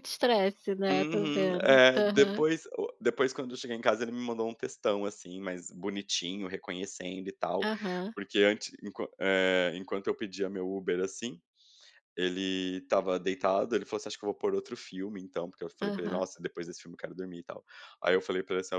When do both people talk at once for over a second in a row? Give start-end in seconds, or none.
0.9-2.4